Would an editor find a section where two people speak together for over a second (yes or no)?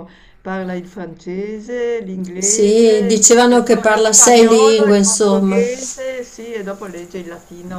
yes